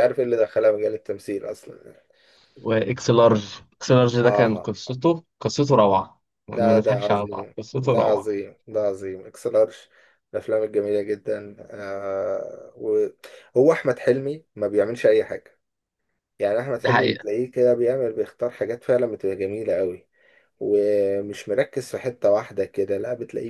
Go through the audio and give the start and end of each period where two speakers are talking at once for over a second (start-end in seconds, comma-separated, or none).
6.5-8.4